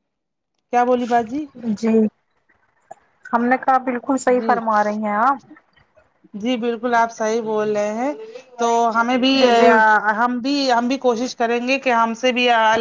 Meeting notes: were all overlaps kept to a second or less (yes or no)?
yes